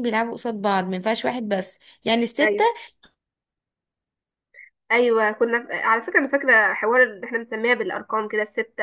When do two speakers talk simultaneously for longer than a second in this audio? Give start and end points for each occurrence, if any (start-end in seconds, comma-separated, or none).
none